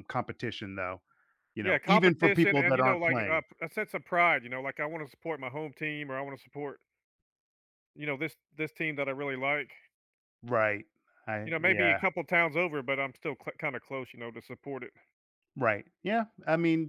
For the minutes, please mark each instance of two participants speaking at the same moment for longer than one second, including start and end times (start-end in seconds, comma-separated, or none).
1.6-3.4